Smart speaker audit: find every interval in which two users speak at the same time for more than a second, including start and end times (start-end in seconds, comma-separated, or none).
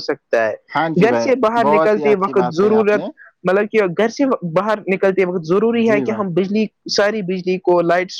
0.8-3.0